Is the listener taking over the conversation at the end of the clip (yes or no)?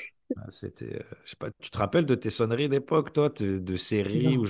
no